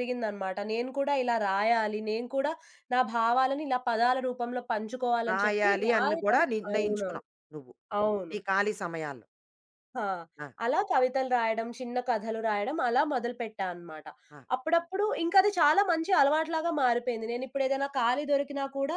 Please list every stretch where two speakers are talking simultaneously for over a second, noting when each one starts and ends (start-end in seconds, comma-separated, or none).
5.3-7.2